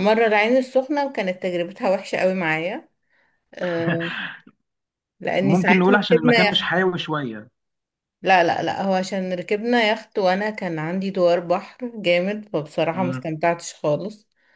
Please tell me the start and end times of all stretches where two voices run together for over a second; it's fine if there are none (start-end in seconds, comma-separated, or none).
5.4-6.6